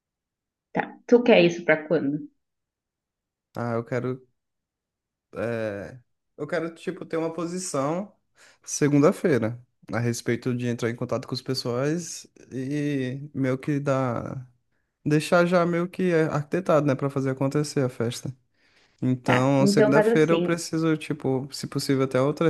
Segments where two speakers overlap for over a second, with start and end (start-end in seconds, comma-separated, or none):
19.2-20.6